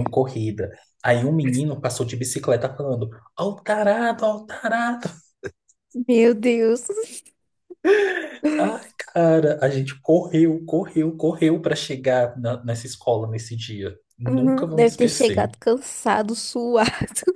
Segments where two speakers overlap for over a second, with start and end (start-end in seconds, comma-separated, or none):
14.3-15.5